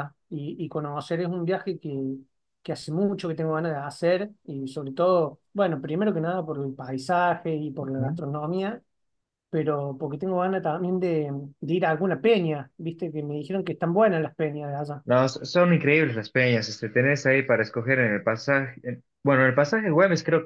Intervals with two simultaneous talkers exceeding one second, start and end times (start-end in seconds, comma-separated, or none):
none